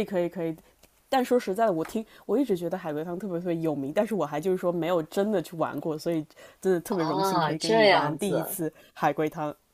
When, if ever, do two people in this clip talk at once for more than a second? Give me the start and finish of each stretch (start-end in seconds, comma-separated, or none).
6.9-8.6